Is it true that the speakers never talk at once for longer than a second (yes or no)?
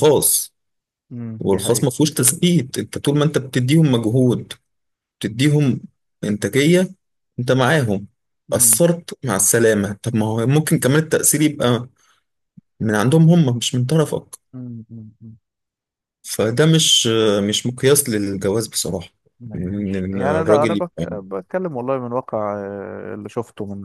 no